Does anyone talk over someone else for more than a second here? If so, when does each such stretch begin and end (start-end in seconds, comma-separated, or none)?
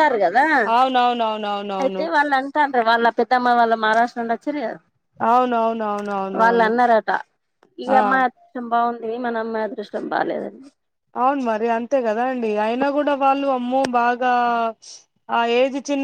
none